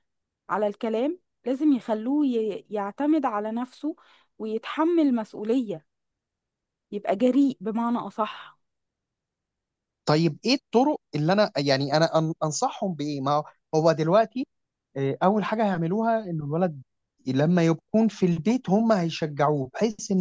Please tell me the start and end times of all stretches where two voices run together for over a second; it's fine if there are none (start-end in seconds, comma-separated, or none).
none